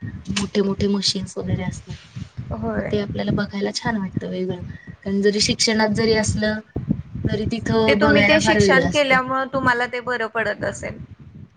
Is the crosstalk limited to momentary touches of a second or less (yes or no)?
no